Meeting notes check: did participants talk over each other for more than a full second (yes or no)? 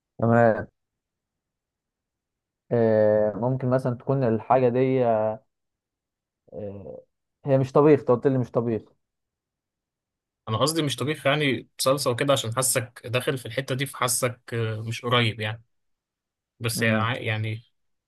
no